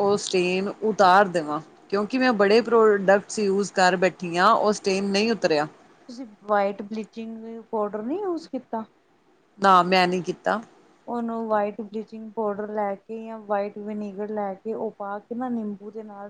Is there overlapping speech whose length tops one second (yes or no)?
no